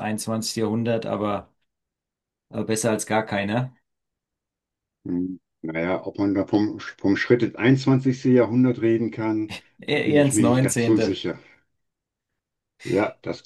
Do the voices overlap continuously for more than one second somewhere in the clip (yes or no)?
yes